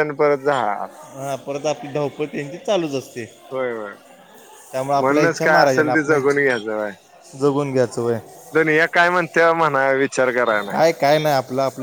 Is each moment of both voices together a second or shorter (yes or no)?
no